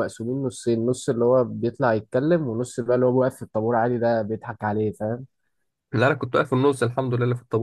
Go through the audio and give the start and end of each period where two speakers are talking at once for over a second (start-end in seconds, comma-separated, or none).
none